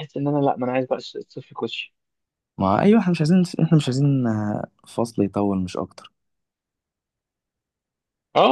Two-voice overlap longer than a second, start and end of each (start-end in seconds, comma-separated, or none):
none